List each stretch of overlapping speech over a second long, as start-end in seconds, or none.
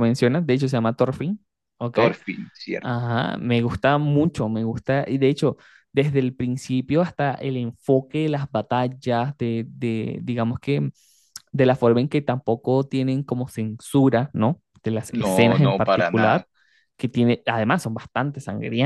15.1-16.4